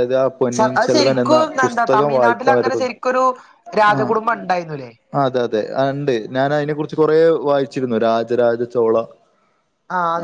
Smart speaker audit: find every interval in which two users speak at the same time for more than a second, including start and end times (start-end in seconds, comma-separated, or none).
0.8-2.9